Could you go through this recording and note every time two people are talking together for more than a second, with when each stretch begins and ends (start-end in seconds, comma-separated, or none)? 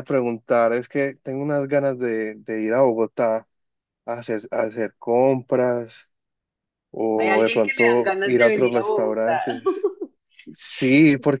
7.2-9.4